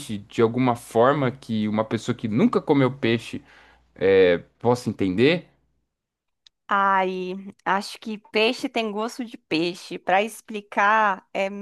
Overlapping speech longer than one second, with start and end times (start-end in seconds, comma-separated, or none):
none